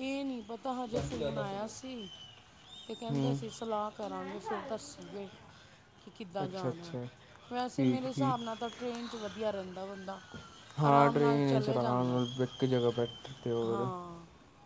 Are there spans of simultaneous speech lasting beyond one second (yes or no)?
yes